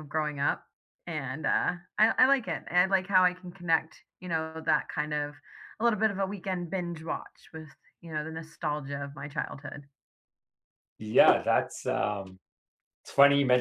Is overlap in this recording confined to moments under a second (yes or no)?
yes